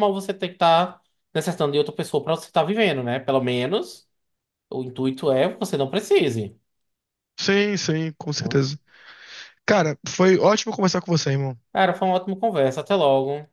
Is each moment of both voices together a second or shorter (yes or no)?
yes